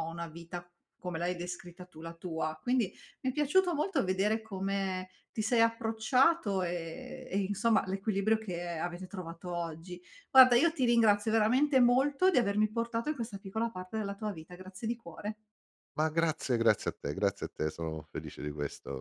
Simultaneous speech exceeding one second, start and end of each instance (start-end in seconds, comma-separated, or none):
none